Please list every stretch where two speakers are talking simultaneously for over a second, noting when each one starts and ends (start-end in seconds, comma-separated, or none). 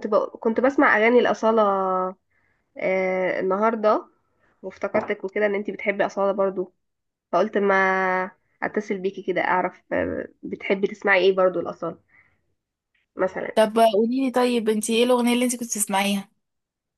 none